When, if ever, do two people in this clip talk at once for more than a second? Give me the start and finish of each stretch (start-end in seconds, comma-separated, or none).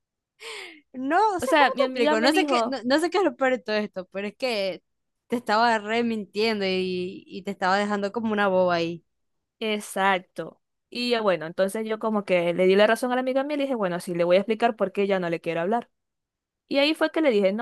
1.4-2.8